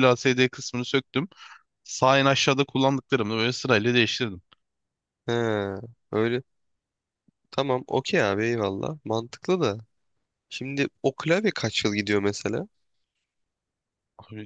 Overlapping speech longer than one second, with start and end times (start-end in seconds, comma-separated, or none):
none